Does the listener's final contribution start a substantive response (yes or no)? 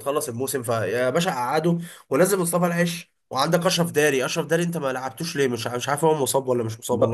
yes